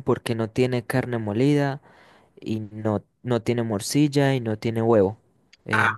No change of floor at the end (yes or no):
yes